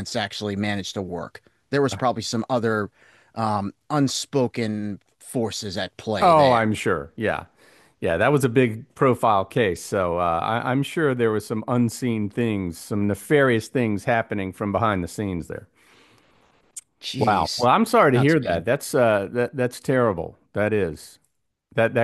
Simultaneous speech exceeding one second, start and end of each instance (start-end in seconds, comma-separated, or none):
17.2-18.6